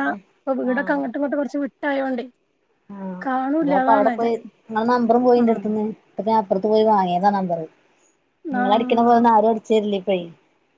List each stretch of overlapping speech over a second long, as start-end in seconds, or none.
none